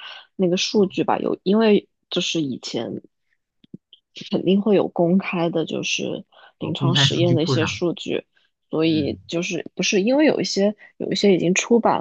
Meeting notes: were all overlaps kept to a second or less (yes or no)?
no